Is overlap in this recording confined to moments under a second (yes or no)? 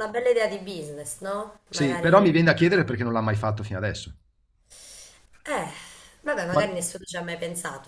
no